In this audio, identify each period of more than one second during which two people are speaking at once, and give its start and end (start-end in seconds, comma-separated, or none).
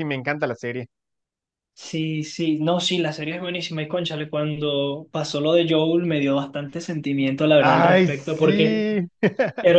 7.6-8.8